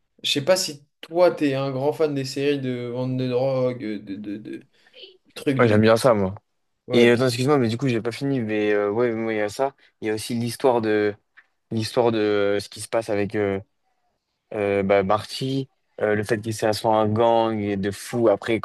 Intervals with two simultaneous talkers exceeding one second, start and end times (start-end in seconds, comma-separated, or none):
none